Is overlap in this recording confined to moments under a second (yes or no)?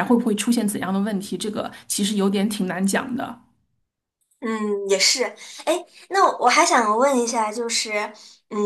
yes